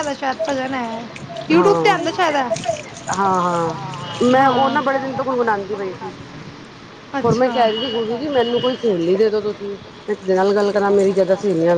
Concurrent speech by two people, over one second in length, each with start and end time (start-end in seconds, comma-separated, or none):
4.4-6.1